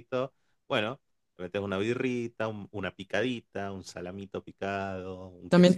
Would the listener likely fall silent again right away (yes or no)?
no